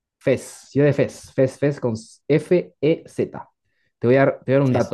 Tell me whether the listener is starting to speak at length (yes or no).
no